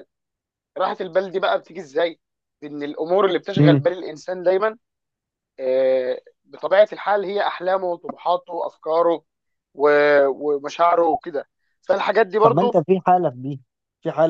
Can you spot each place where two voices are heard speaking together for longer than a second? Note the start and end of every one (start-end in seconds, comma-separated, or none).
none